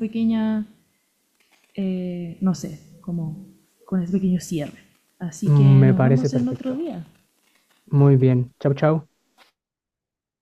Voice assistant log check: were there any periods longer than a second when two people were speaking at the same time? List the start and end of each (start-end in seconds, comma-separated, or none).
5.4-6.9